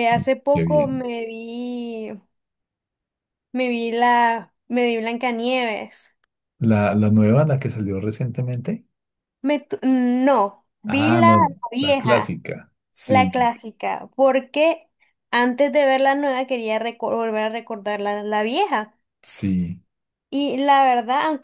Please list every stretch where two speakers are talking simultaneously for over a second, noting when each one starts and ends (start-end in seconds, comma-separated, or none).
10.8-12.4